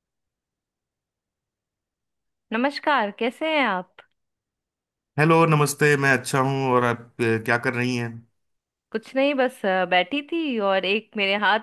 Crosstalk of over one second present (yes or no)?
no